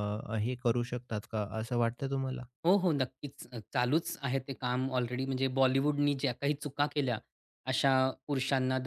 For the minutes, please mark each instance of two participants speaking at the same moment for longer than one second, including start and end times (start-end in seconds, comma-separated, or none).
none